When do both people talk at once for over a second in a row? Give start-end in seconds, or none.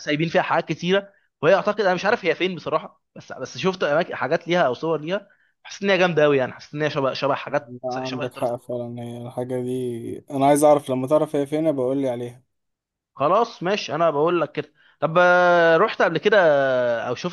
7.5-8.7